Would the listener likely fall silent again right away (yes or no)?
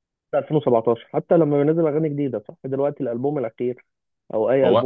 yes